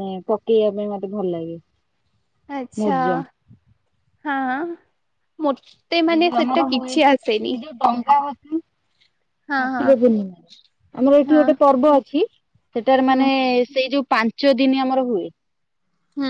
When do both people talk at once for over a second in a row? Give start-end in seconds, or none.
6.1-7.5